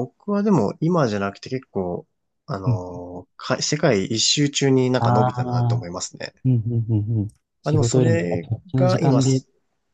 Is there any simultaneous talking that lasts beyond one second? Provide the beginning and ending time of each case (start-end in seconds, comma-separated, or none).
7.6-9.4